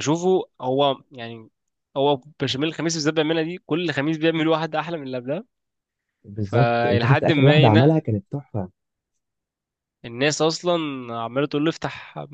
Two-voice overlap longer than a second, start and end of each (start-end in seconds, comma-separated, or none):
6.4-8.0